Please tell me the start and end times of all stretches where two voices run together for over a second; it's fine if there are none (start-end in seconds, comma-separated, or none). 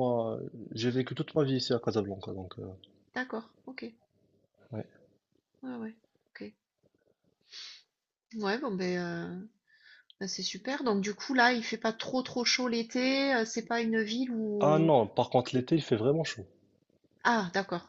none